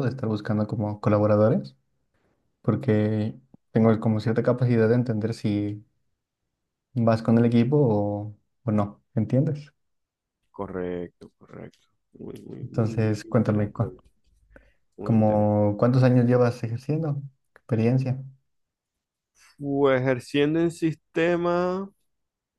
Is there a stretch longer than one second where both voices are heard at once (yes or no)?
yes